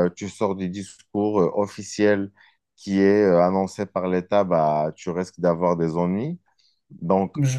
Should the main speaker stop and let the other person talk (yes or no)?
no